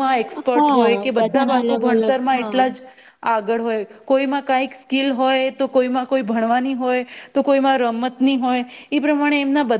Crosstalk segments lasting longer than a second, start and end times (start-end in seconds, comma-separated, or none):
0.6-2.5